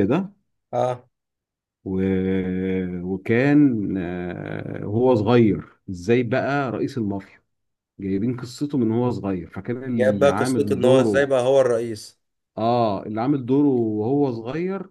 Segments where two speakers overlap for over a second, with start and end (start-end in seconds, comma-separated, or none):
9.9-11.3